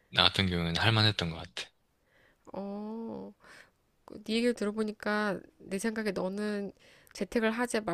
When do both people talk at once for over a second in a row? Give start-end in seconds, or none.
none